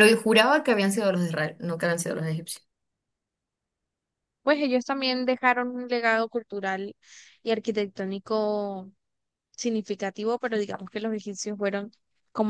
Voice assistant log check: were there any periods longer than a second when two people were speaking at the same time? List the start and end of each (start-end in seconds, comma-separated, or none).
none